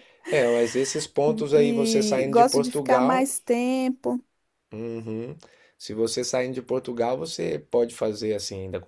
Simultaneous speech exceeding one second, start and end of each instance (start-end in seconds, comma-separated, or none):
1.5-3.3